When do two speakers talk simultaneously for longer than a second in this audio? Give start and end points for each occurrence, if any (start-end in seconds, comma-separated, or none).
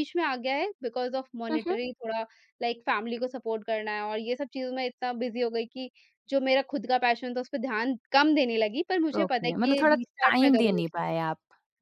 9.2-10.8